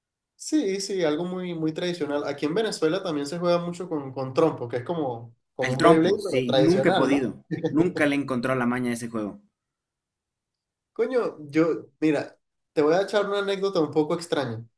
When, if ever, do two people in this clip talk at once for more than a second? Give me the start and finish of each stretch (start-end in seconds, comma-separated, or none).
5.6-7.3